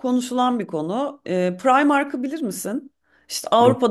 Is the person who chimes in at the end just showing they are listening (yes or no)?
yes